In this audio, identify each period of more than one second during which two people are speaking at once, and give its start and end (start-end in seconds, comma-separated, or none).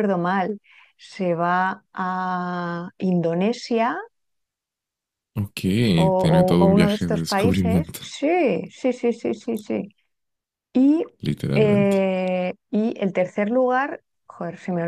6.6-8.1